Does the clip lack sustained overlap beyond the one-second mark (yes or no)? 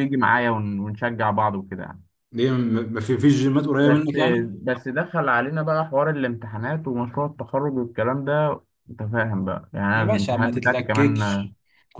no